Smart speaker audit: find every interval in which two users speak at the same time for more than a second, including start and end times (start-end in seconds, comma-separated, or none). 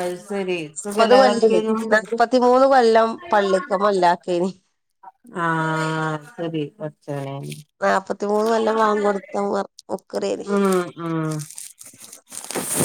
none